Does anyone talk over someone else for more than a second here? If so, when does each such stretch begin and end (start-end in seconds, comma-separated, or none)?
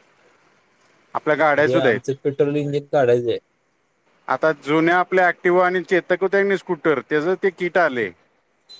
none